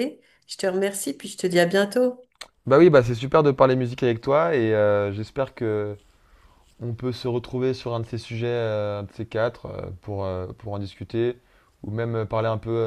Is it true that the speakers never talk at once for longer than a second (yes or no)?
yes